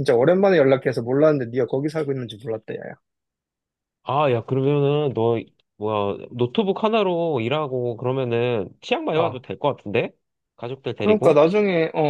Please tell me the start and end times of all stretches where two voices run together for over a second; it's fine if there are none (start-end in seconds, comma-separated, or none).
none